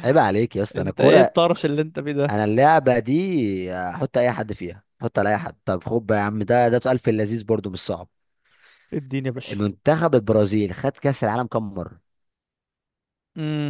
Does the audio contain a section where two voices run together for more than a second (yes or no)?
no